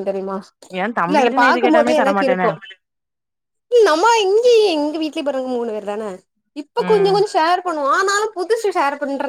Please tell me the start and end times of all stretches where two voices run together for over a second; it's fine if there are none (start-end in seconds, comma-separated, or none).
1.1-2.5